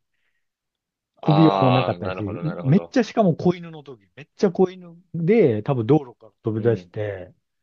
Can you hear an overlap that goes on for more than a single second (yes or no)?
yes